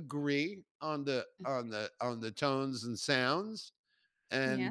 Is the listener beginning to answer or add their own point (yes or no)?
no